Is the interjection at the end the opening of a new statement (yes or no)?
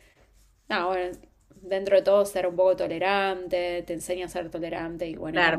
yes